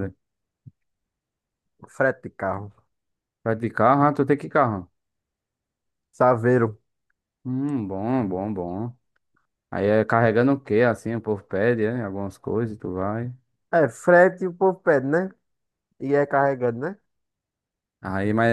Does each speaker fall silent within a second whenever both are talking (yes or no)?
yes